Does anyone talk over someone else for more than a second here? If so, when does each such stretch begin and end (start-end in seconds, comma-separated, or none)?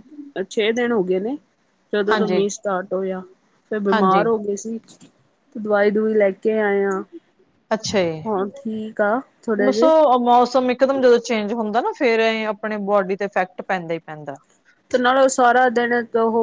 none